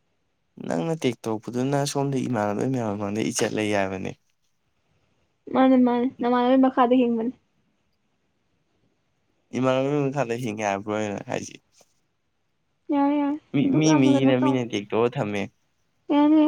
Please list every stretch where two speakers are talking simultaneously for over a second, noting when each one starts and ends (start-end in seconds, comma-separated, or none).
none